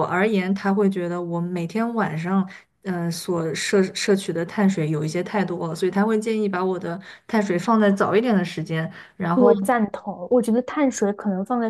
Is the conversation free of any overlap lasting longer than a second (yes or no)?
yes